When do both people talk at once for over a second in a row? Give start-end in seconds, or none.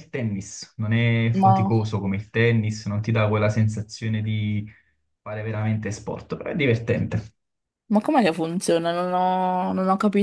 none